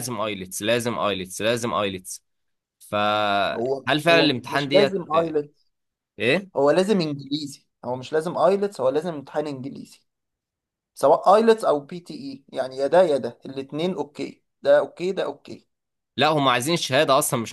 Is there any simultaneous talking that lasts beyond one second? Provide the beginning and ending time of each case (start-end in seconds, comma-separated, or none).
3.5-5.0